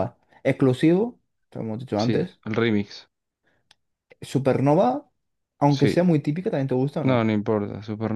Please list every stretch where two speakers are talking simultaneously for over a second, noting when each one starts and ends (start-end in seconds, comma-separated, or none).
none